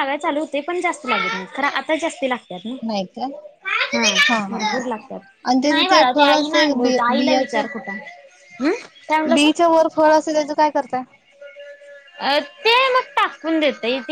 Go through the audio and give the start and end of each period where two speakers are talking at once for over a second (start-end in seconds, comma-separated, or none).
5.6-7.6